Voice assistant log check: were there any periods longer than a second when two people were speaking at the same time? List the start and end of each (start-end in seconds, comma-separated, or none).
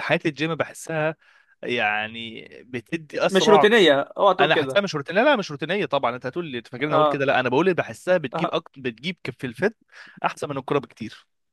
none